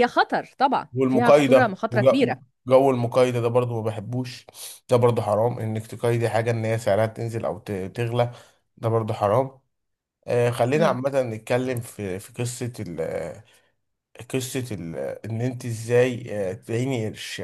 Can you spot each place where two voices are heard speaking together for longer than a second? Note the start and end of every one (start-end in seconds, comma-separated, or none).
0.9-2.4